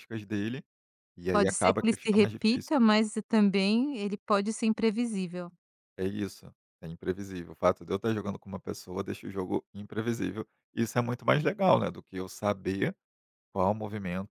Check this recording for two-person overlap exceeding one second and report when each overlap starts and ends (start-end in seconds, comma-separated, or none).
1.3-2.7